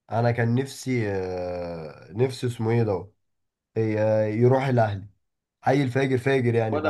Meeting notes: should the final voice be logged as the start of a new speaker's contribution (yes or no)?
yes